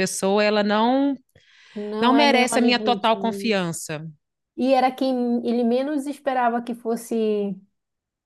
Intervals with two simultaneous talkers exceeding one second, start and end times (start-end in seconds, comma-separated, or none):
2.0-3.5